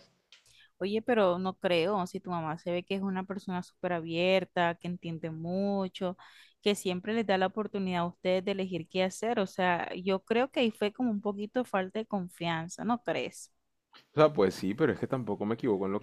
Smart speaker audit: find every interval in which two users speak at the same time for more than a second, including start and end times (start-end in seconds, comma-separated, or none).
none